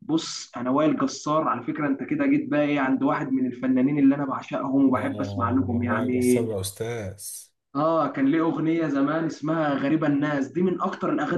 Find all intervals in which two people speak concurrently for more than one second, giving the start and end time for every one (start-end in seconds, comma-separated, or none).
5.0-6.5